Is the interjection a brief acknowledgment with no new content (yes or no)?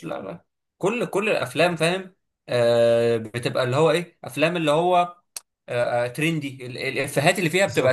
yes